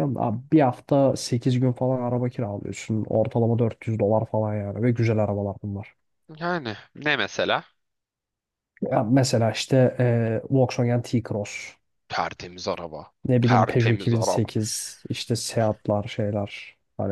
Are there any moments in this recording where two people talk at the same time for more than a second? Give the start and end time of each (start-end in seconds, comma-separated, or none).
13.2-14.5